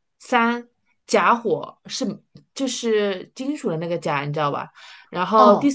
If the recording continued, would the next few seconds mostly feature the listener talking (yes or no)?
no